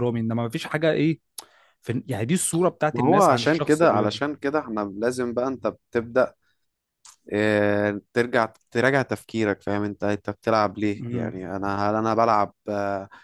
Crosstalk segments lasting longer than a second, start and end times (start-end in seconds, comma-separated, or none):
2.9-4.2